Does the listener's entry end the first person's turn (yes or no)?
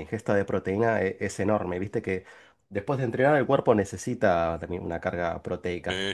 yes